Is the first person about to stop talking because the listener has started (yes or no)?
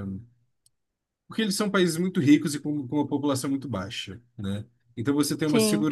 no